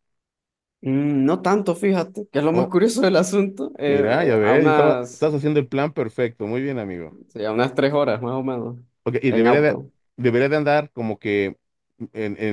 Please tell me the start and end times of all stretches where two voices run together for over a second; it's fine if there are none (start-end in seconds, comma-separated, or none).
3.9-5.3